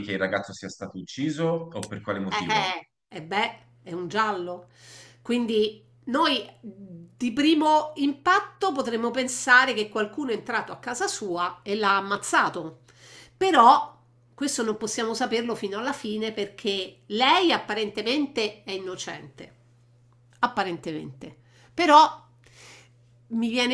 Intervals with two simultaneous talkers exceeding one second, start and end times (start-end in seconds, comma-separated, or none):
none